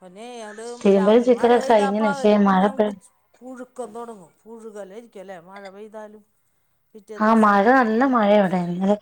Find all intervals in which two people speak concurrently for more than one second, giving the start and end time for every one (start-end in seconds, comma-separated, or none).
1.0-2.9